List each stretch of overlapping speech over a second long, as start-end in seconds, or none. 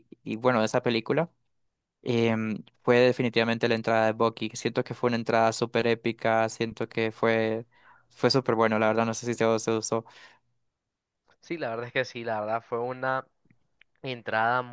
none